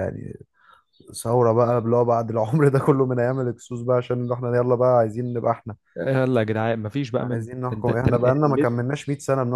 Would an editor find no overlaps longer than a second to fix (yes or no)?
no